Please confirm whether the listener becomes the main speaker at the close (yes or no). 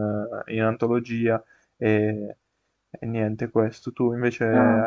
no